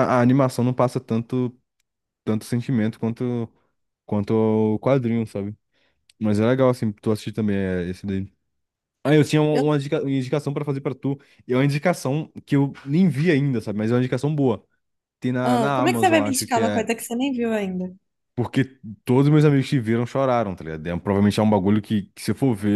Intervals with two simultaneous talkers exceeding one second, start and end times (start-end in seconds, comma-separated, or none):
15.4-16.9